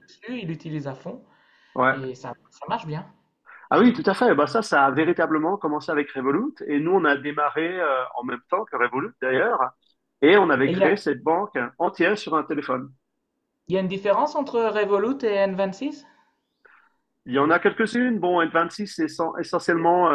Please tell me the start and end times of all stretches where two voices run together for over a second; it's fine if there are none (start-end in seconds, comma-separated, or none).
none